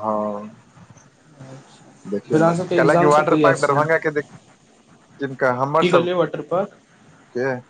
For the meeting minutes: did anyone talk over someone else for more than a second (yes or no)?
yes